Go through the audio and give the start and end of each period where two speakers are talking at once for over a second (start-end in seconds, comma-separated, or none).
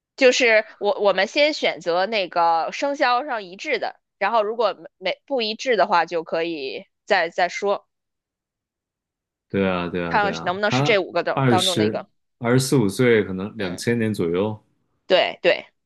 10.1-12.0